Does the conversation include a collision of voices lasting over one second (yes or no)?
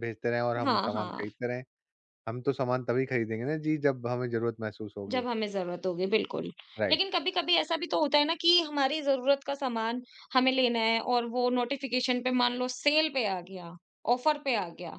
no